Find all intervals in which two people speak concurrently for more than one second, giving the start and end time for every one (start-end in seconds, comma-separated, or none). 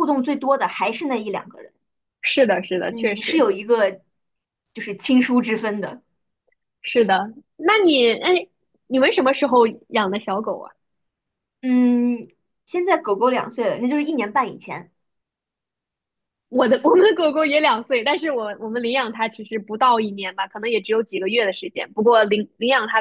none